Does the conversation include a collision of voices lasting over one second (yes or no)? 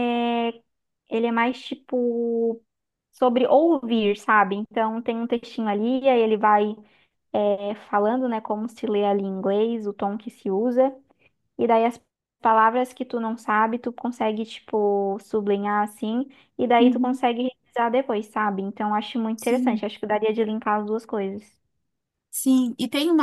no